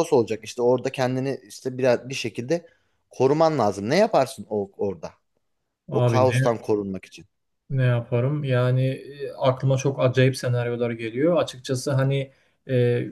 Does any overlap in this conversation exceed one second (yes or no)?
no